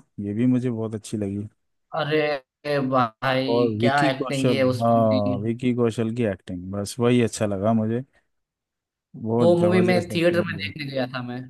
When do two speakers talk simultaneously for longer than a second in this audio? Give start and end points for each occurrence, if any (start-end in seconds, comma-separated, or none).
3.5-5.2, 9.4-10.7